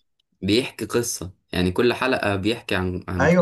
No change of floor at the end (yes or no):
no